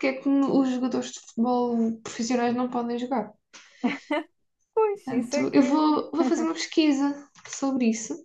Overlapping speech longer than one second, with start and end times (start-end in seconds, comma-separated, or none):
5.0-6.3